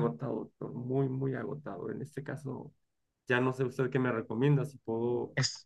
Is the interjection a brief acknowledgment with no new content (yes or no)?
yes